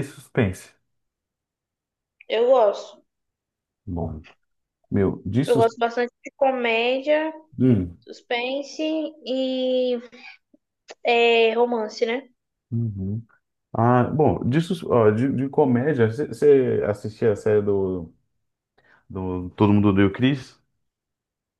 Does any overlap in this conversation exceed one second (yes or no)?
no